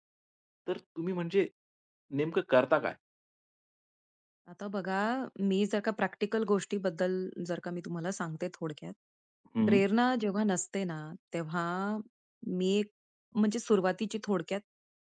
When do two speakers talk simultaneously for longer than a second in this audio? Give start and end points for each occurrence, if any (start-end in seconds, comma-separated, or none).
none